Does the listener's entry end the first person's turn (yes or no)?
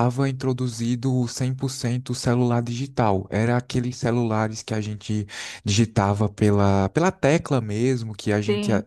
no